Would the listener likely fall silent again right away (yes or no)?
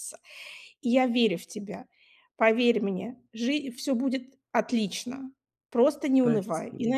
yes